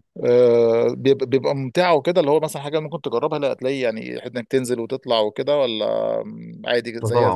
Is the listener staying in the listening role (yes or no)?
no